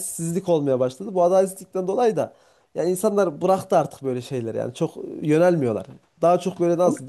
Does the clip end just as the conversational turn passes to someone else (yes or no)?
no